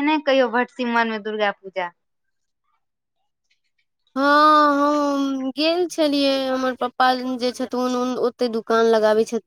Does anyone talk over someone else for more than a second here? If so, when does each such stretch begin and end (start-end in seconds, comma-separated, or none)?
none